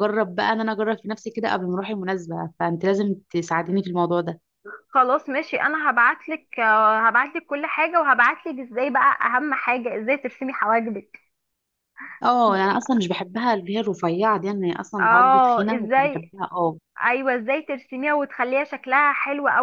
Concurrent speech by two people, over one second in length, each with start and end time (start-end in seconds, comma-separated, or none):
15.0-16.3